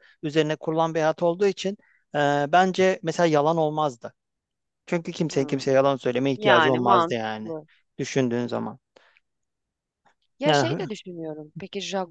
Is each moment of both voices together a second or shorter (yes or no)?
no